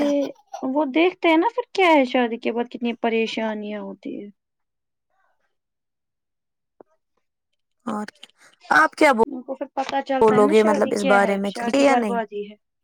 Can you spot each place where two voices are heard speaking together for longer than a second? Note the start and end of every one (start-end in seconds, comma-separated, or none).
10.1-12.2